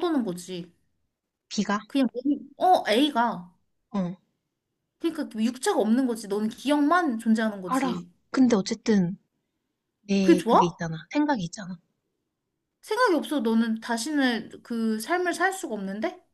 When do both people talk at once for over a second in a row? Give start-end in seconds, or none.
none